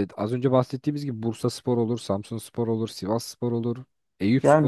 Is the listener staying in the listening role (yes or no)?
no